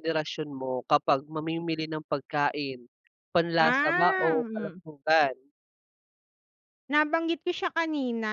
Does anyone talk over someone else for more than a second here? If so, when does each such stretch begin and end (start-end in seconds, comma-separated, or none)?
3.6-4.8